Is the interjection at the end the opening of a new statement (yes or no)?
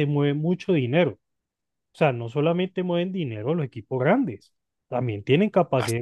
no